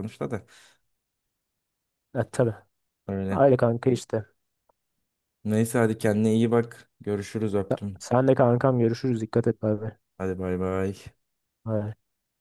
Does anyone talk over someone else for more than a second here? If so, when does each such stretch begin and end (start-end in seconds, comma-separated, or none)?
none